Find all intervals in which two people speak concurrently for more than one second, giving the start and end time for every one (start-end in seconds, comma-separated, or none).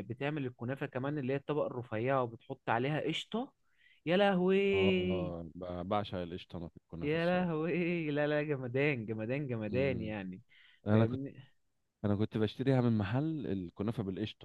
none